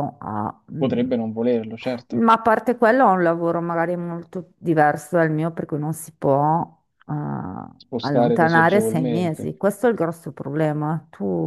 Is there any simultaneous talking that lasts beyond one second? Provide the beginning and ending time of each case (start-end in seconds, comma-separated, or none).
8.0-9.5